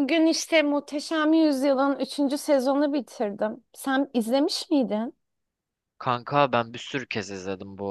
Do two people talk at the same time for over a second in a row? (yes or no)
no